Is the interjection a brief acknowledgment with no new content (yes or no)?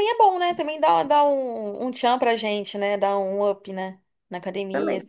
yes